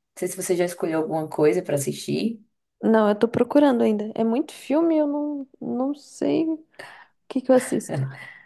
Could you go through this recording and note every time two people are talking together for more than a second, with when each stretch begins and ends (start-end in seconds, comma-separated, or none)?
none